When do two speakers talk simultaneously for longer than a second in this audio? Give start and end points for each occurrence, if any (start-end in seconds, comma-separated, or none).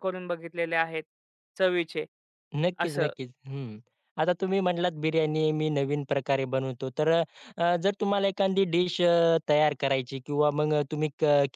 none